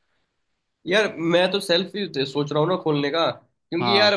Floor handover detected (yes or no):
no